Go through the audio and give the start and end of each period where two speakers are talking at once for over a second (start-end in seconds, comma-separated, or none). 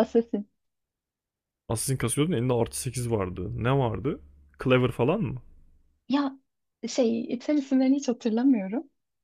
none